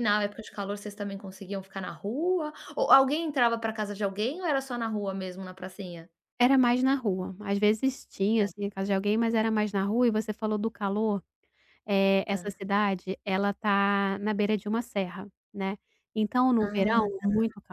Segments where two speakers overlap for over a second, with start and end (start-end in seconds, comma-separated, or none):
none